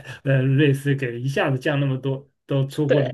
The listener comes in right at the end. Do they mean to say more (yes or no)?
no